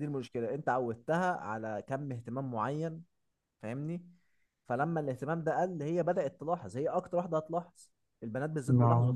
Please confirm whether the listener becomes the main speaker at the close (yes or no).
no